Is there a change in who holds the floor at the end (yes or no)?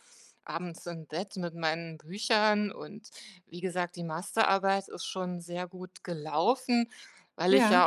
no